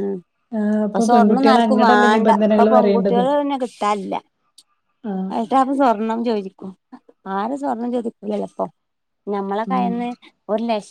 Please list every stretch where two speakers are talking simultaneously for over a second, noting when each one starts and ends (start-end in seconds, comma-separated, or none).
1.1-3.2